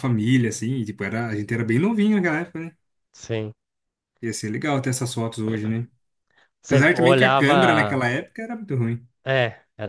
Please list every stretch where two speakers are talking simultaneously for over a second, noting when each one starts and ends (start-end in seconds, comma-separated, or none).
6.7-8.0